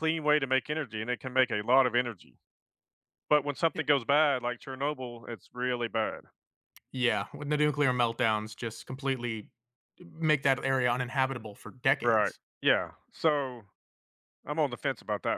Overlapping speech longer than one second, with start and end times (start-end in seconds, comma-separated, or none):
none